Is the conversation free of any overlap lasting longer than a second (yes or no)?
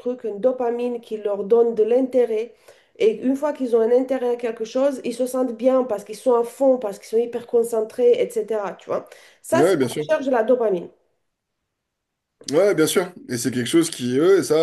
yes